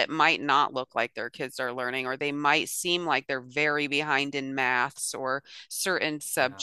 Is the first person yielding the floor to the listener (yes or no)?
no